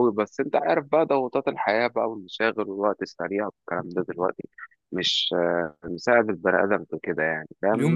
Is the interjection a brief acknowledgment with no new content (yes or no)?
yes